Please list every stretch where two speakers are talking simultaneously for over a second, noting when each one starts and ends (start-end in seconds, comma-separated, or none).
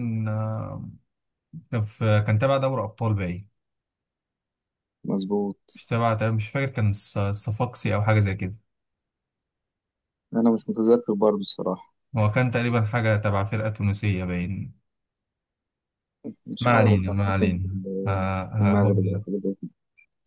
16.6-19.2